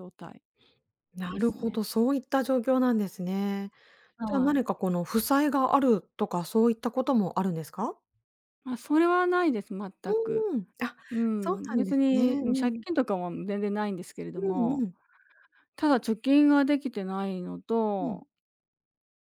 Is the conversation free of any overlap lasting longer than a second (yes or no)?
no